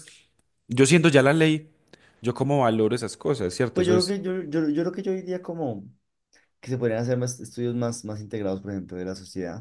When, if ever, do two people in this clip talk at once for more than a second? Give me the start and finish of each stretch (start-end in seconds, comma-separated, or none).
none